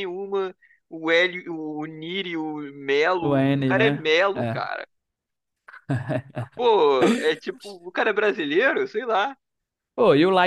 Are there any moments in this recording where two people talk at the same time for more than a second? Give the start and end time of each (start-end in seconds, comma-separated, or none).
3.2-4.6